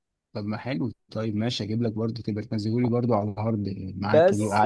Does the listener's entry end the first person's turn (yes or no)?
yes